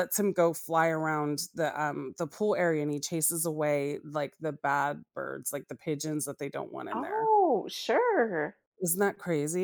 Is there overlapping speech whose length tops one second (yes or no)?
no